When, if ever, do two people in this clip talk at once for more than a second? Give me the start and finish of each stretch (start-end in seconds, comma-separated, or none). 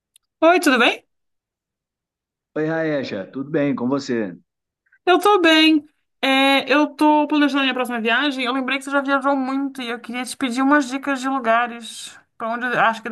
none